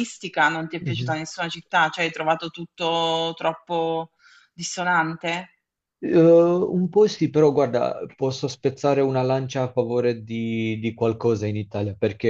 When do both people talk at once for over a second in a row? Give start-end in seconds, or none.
none